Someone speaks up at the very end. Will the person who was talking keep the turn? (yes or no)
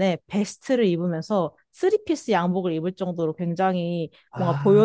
yes